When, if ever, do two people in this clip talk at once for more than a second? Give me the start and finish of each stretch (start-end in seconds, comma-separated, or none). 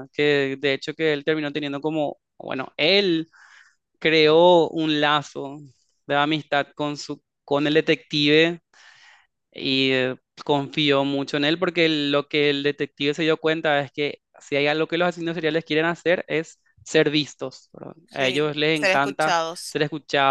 18.1-19.8